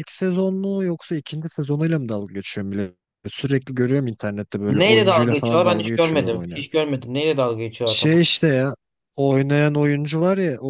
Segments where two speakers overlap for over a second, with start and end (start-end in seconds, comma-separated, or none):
4.7-6.6